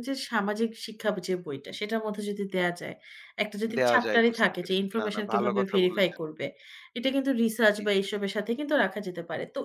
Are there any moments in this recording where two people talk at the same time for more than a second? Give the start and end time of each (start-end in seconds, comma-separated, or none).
3.8-6.2